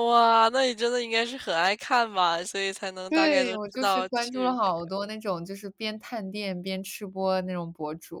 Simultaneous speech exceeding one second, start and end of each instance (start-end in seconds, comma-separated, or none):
3.1-4.7